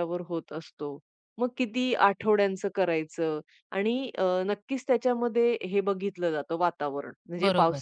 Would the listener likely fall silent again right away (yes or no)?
yes